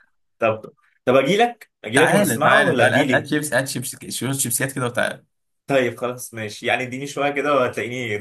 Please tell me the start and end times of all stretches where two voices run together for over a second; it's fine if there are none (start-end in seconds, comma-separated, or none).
1.9-3.3